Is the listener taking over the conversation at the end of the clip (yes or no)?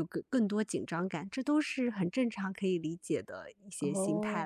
yes